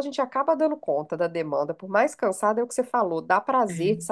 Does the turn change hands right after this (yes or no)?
no